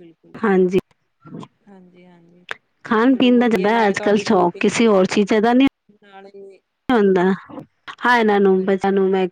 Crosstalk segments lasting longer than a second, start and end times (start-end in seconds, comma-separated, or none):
none